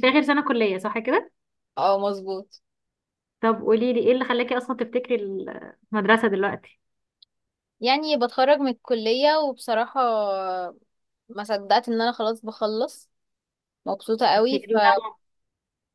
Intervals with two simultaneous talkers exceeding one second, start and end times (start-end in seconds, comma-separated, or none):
none